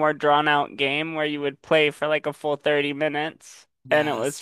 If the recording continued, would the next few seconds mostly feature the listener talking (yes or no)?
yes